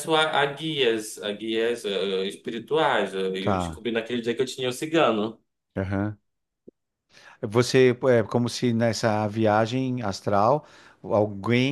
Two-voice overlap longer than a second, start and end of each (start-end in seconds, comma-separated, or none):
none